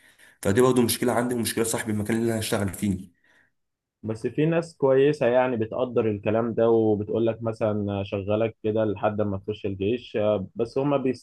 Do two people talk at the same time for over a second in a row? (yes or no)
no